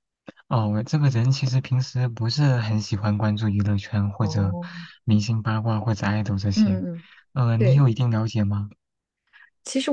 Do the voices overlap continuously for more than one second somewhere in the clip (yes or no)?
no